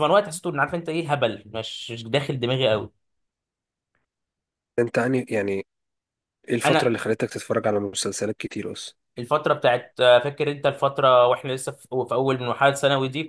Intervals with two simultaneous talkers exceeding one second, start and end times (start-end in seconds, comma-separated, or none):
none